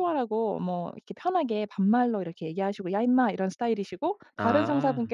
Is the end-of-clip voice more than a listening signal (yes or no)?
no